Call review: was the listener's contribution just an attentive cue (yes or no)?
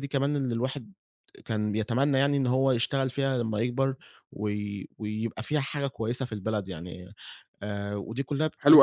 no